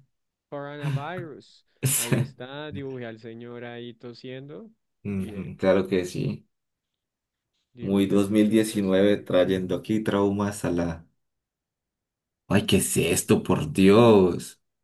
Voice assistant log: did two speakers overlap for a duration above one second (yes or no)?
yes